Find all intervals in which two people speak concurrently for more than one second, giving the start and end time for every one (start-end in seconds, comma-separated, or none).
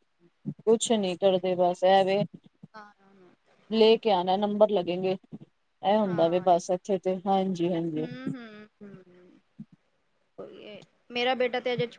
none